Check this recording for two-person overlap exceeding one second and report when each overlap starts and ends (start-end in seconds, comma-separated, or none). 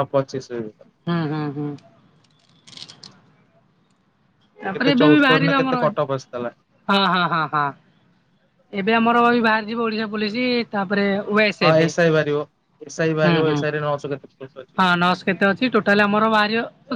4.7-6.5